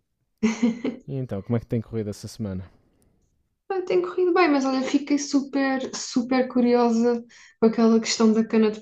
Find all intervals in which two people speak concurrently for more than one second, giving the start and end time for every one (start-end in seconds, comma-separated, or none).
none